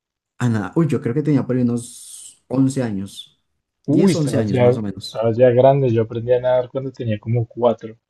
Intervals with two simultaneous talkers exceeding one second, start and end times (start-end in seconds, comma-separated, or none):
3.9-5.2